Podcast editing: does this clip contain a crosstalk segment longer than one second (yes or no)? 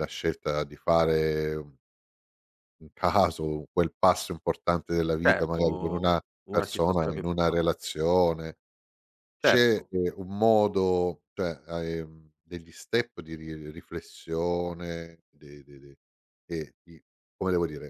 yes